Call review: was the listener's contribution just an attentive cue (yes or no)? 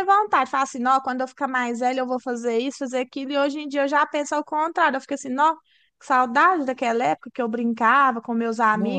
yes